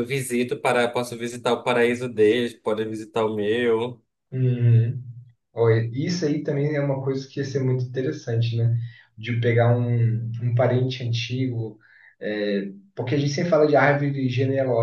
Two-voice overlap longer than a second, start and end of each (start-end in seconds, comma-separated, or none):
none